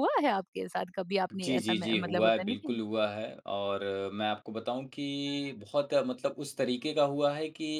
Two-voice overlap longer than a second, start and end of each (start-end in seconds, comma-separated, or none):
1.3-2.8